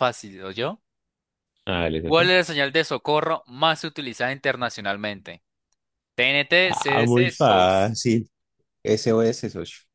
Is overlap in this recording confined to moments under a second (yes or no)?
no